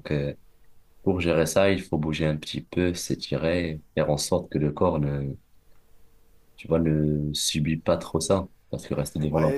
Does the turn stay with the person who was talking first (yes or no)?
no